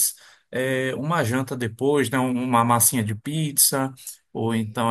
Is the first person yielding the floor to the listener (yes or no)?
no